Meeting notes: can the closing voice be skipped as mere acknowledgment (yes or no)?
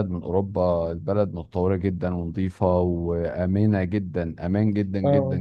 no